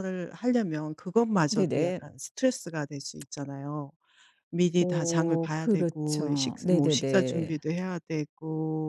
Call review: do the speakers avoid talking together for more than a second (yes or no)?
no